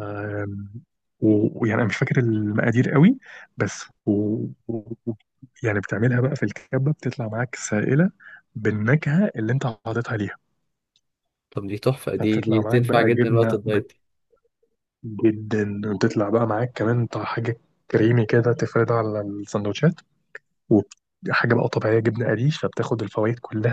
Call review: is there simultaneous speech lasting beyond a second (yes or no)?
yes